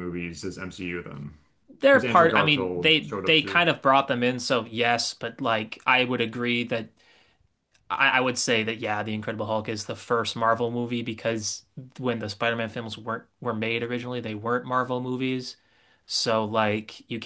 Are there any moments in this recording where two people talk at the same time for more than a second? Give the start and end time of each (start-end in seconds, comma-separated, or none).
1.9-3.6